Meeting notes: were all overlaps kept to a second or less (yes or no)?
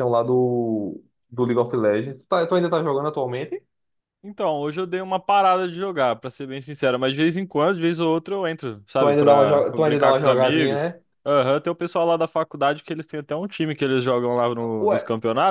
no